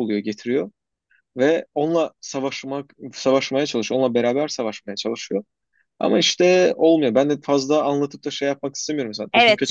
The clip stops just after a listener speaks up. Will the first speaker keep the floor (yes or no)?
no